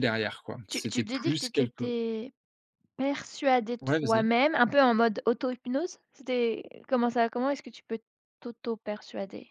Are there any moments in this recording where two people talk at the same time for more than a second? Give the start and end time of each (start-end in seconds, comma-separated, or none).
0.7-1.9